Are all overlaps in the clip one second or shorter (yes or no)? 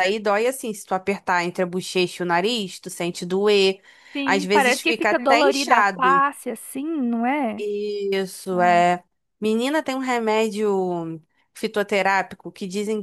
no